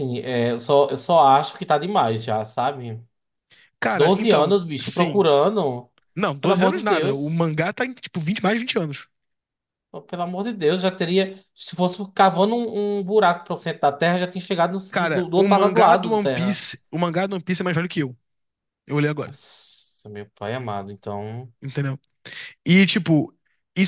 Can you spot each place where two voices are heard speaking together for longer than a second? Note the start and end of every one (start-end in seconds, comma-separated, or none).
3.9-5.3, 6.4-7.6, 14.9-16.6